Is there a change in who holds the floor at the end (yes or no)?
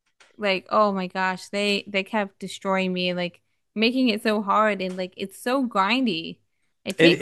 yes